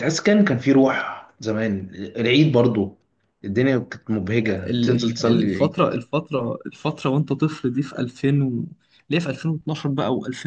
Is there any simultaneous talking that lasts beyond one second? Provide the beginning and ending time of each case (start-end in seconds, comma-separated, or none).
4.5-5.8